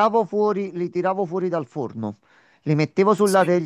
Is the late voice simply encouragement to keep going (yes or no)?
yes